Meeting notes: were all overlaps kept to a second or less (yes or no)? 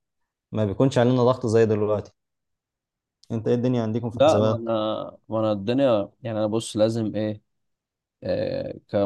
yes